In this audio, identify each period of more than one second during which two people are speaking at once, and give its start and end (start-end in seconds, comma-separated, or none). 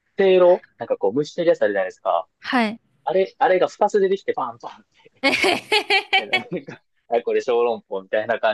none